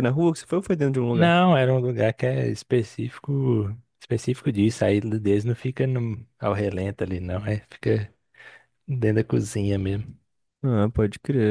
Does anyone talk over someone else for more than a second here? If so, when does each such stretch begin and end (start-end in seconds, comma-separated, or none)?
none